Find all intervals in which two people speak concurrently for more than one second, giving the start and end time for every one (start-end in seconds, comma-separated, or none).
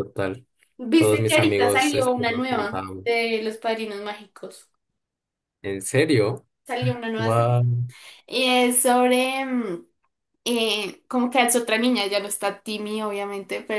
0.9-3.1